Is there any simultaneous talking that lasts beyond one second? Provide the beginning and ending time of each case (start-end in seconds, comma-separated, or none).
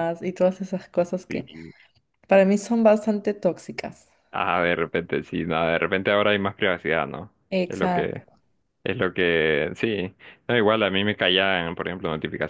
none